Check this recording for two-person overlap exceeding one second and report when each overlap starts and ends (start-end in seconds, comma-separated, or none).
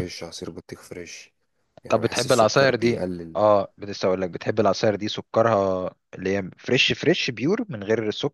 1.9-3.4